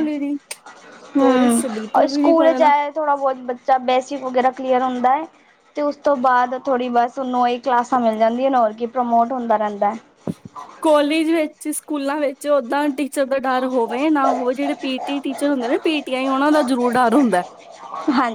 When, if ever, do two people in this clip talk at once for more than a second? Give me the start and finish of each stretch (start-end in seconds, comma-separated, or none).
1.2-2.7